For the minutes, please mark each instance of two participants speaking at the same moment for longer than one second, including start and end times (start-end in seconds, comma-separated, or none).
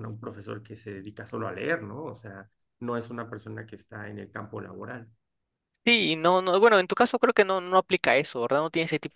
none